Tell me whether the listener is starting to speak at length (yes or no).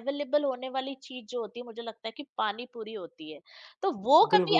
no